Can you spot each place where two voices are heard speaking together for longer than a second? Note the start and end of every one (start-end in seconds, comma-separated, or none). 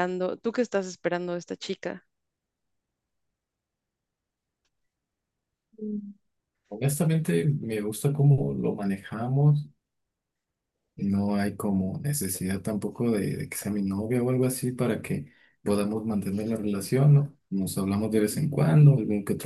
none